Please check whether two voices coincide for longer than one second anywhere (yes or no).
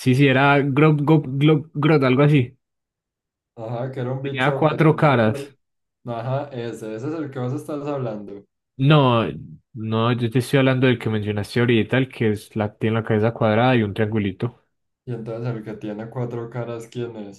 yes